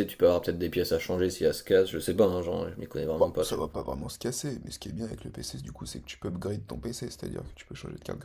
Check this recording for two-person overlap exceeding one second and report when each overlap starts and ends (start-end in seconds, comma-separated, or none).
none